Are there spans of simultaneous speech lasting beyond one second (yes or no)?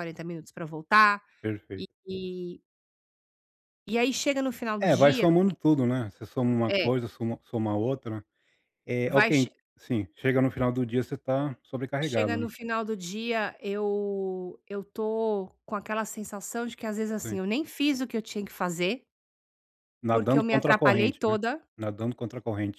yes